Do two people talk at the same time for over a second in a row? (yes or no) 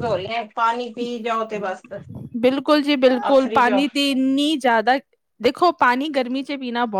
no